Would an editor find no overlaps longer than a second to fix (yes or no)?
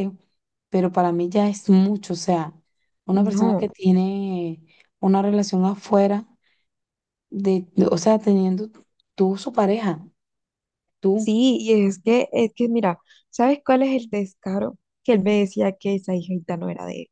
yes